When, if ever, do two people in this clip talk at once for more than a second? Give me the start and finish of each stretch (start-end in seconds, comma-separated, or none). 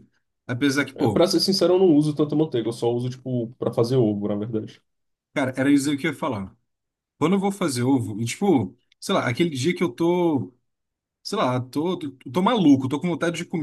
none